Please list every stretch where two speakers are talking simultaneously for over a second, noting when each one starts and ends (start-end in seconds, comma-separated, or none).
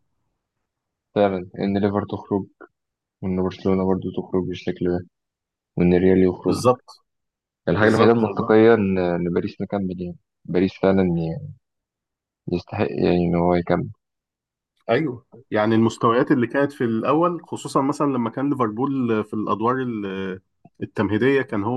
none